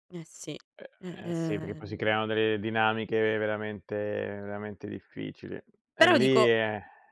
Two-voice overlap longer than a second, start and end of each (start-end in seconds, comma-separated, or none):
1.0-2.2